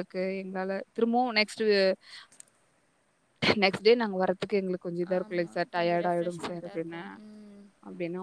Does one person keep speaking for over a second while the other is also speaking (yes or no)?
yes